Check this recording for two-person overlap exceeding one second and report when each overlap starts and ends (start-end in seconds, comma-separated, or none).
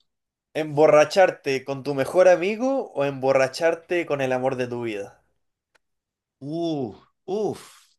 none